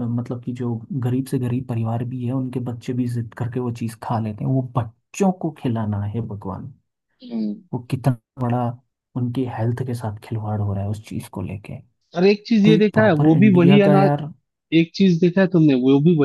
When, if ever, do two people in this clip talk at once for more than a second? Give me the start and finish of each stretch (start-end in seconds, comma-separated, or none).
12.7-14.1